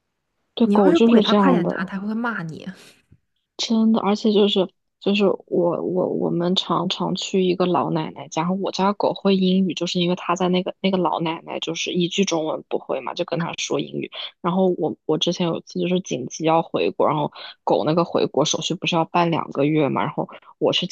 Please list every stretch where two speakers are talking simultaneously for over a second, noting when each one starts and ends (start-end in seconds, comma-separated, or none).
0.6-1.9